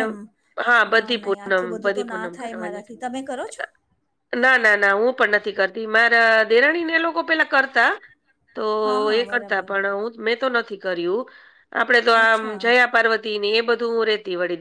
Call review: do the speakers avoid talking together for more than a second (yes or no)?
no